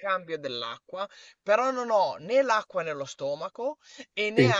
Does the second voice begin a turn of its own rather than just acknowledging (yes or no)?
no